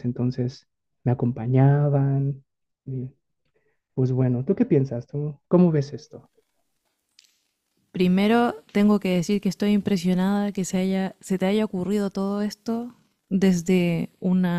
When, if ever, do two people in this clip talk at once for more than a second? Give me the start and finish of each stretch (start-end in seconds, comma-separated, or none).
none